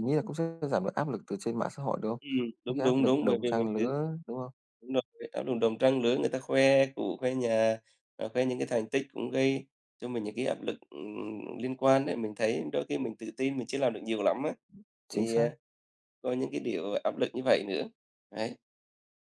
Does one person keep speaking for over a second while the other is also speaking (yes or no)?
yes